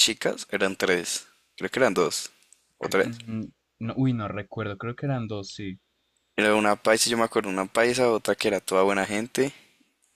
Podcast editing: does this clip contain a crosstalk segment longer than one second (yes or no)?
no